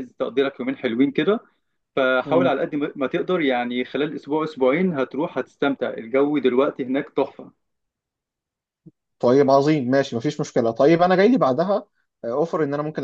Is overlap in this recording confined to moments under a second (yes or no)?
yes